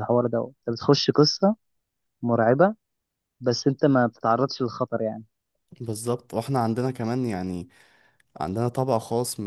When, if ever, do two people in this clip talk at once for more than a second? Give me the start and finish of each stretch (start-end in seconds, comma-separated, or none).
none